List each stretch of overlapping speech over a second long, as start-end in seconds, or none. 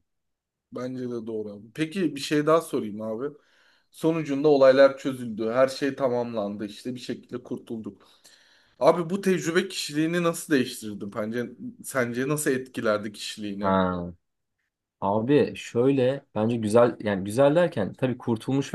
none